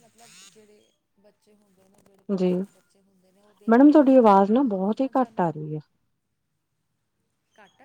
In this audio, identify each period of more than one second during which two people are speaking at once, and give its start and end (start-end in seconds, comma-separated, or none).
3.7-5.5